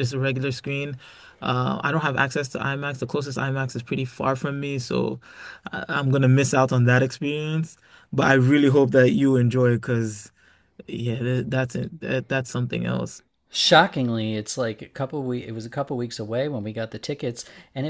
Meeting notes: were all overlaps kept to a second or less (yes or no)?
yes